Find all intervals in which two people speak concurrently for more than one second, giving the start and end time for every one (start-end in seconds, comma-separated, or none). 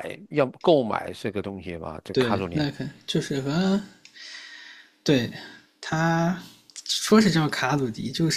none